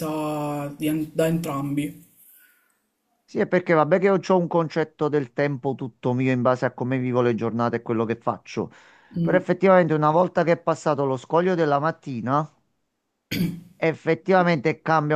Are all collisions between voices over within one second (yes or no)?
yes